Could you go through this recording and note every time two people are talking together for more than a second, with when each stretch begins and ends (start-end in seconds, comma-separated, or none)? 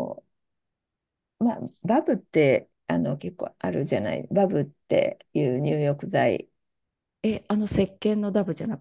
none